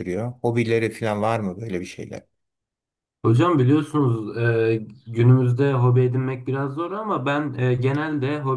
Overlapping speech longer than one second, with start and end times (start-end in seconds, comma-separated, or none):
none